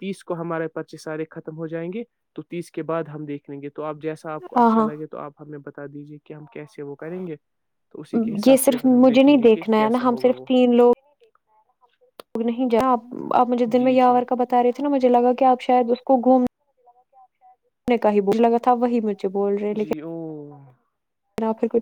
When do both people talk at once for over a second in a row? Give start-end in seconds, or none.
8.5-10.4